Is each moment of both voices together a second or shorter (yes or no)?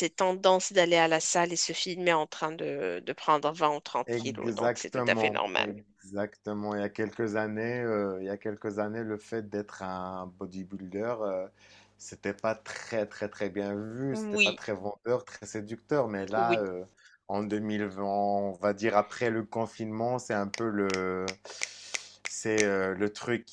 no